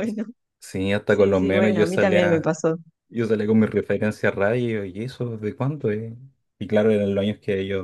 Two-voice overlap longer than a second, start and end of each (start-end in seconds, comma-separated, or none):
1.1-2.5